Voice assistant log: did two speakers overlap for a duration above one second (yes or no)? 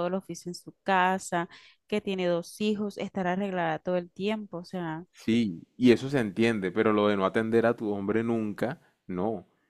no